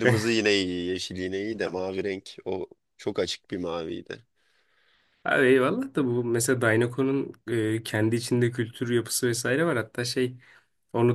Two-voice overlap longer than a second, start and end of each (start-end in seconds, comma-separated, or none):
none